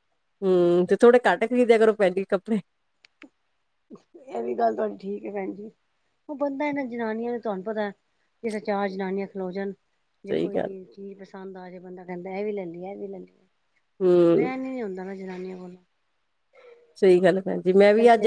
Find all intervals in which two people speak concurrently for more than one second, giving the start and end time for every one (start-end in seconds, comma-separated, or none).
none